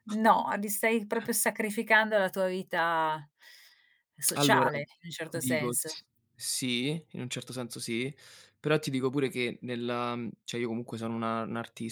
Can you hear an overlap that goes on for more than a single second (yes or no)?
yes